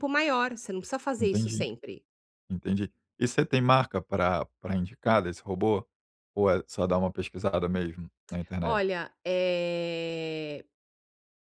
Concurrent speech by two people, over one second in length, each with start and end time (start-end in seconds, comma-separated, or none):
none